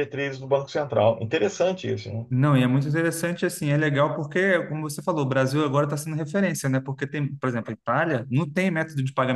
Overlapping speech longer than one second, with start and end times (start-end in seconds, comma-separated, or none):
none